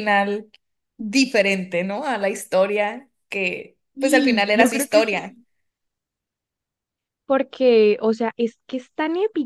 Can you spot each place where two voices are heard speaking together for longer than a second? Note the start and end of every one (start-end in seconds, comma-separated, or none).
4.0-5.4